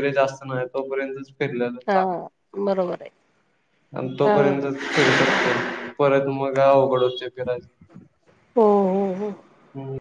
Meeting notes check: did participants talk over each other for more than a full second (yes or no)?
no